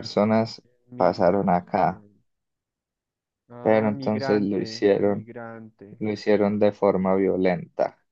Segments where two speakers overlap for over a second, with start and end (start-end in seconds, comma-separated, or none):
3.6-5.3